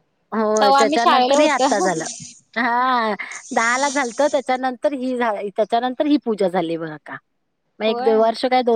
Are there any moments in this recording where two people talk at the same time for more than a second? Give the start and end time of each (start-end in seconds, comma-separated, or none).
0.6-2.0